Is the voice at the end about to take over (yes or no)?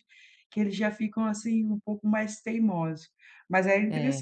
no